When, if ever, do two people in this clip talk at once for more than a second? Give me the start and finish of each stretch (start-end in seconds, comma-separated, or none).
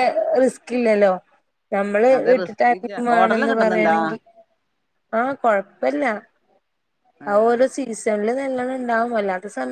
2.2-3.9